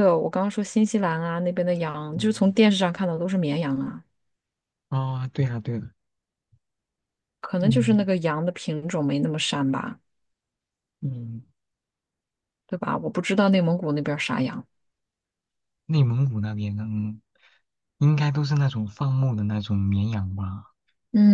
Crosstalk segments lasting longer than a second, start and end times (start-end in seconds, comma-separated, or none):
none